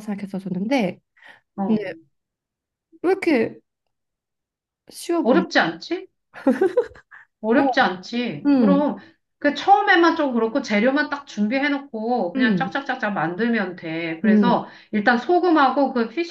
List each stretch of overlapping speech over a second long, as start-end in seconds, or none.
none